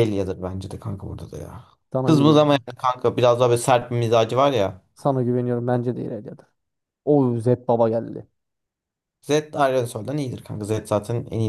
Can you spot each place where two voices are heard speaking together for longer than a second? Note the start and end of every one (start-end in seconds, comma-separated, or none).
none